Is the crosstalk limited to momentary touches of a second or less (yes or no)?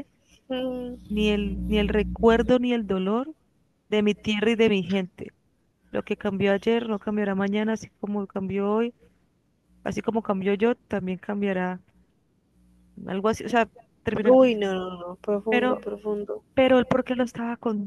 yes